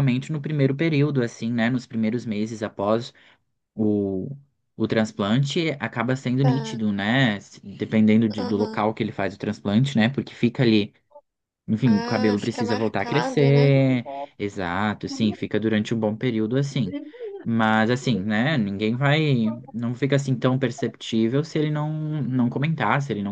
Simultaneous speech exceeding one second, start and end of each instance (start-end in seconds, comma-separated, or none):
11.8-13.7